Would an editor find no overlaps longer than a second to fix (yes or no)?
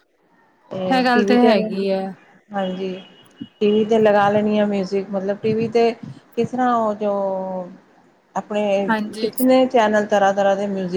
yes